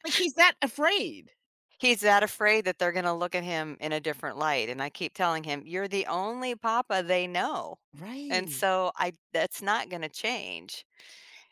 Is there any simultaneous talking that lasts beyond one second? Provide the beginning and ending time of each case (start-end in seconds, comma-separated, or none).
none